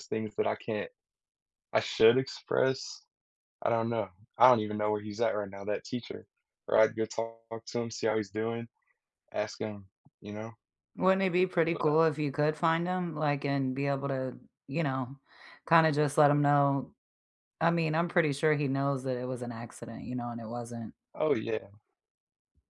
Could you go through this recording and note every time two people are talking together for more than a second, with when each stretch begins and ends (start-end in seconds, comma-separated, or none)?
none